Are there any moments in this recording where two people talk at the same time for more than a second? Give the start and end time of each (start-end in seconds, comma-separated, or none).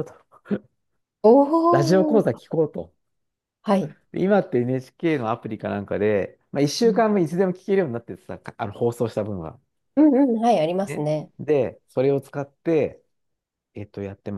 none